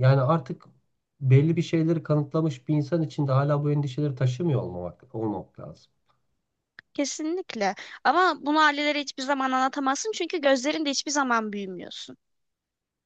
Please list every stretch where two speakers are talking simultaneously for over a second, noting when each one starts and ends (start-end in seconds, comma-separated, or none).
none